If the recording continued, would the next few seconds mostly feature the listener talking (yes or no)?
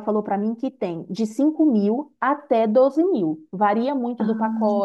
no